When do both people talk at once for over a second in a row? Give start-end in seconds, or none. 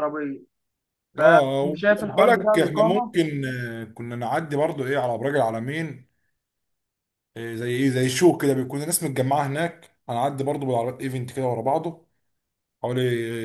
1.2-3.1